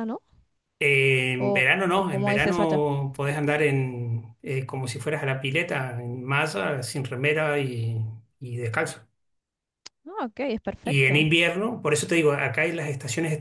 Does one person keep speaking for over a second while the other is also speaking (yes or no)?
yes